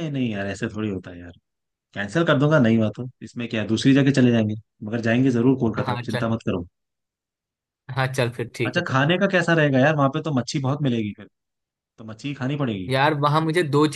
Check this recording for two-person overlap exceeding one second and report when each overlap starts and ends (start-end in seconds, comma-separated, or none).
none